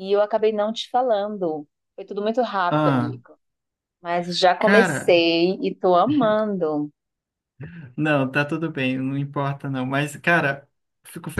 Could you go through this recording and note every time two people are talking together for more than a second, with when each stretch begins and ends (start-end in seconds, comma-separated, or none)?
none